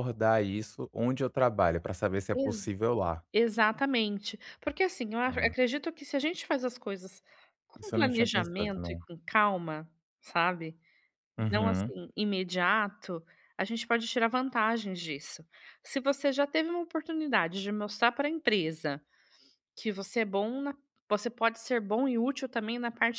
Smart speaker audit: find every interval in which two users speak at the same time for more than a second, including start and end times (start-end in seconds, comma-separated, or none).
7.8-9.0